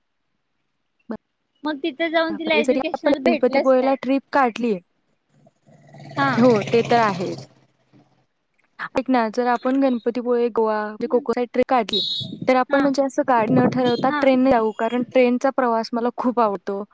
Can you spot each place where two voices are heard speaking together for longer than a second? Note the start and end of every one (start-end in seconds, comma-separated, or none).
2.3-3.9